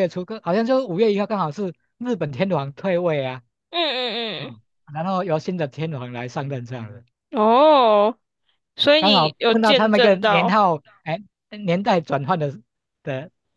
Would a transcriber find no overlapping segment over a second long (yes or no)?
no